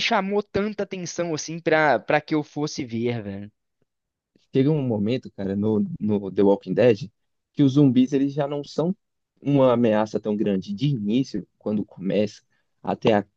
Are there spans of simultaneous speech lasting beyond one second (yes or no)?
no